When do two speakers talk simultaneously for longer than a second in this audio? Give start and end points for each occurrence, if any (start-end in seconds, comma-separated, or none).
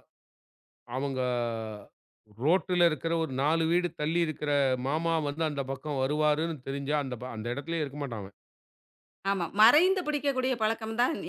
none